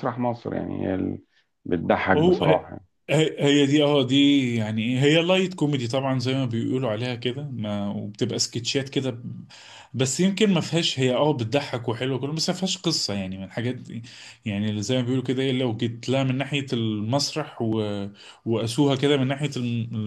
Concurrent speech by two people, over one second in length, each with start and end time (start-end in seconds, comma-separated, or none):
none